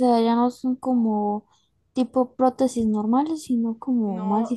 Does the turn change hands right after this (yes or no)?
yes